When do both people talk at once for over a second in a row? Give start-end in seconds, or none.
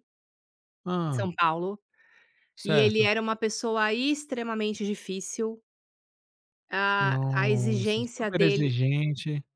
7.0-8.7